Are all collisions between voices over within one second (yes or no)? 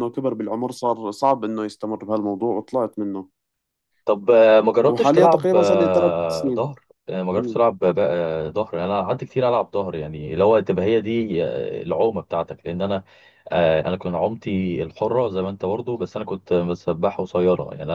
no